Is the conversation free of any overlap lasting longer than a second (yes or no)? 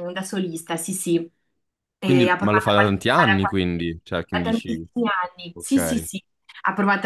no